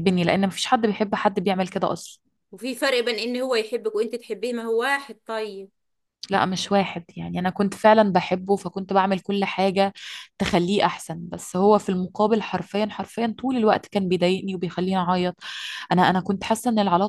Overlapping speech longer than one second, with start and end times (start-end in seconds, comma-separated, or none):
none